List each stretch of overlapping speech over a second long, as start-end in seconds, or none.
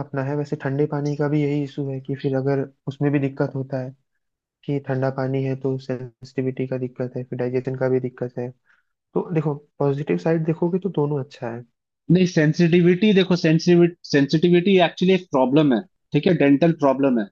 none